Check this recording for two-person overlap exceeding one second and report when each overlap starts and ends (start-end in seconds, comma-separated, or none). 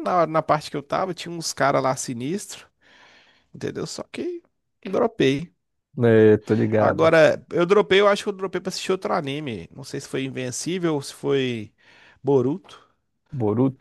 none